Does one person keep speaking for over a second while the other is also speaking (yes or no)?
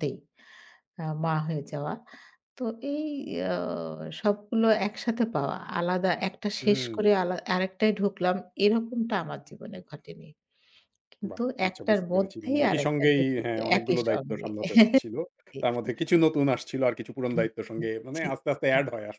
yes